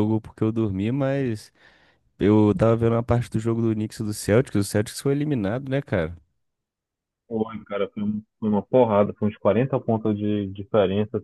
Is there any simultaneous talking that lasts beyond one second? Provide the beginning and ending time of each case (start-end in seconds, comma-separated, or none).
none